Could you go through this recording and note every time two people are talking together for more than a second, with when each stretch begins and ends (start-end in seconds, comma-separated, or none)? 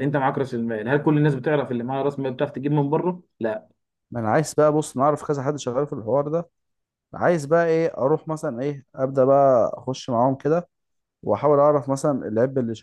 none